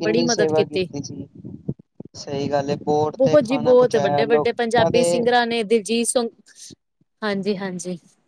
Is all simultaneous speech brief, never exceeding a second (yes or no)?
no